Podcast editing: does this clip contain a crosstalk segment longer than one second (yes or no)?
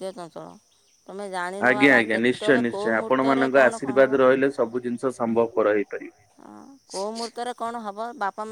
yes